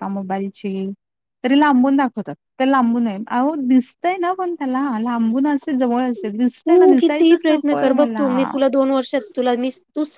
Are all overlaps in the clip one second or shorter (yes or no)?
yes